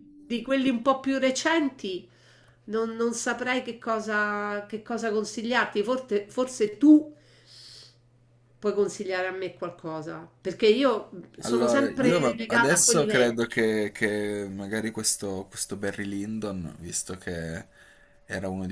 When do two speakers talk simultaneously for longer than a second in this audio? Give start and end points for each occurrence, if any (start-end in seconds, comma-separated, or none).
11.4-13.6